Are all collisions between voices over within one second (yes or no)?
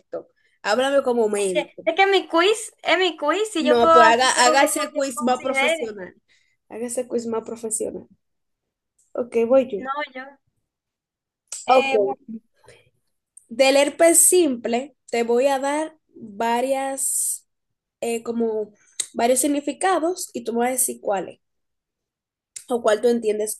no